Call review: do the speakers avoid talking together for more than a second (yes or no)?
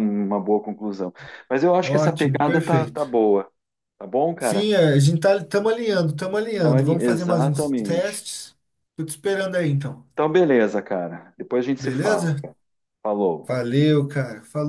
no